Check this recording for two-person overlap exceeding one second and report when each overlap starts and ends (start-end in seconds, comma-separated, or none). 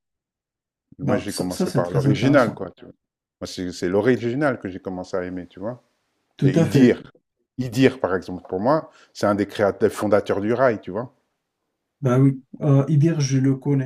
1.0-2.6